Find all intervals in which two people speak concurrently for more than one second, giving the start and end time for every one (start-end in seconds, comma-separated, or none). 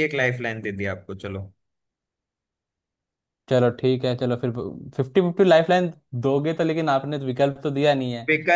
none